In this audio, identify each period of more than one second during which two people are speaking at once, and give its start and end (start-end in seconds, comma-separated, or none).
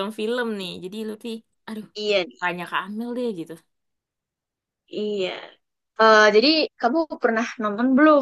none